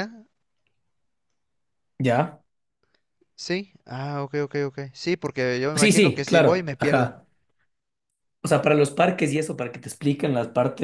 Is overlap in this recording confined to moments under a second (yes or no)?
no